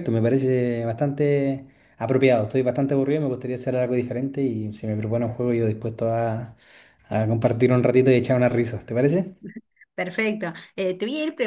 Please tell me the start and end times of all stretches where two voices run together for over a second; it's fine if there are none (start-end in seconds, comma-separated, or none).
none